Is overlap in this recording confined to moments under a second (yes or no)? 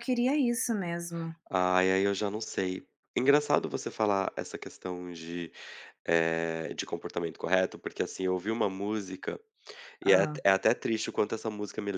yes